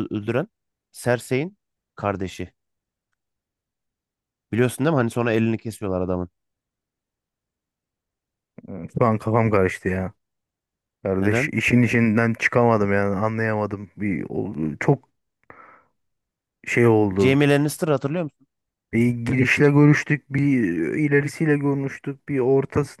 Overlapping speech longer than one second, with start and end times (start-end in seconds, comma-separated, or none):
none